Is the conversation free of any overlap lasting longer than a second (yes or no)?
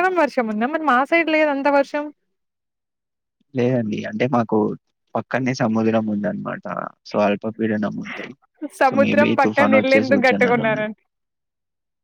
no